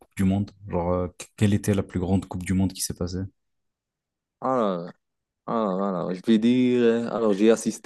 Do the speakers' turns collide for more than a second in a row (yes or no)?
no